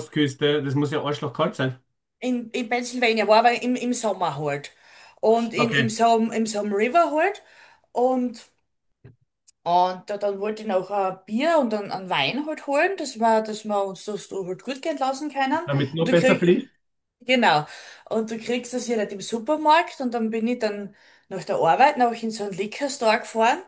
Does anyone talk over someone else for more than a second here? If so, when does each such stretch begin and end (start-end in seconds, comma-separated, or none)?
none